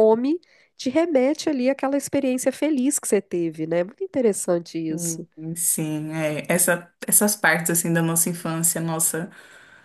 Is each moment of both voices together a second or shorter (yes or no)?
yes